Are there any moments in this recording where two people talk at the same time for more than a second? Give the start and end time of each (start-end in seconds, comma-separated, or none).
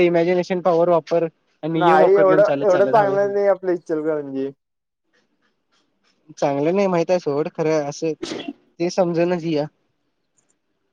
none